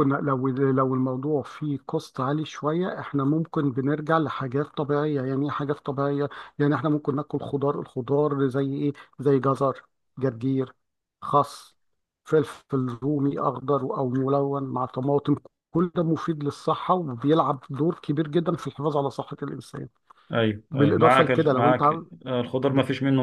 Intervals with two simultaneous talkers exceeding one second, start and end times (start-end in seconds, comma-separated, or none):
20.7-22.1